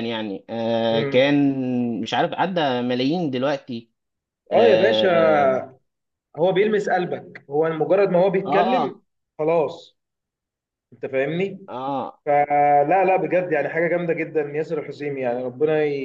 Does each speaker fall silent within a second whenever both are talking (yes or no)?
yes